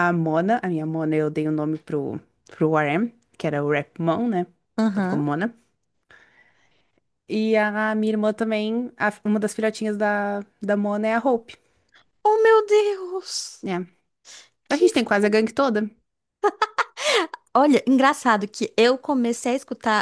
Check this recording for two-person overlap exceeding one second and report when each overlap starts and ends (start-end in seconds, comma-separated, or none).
none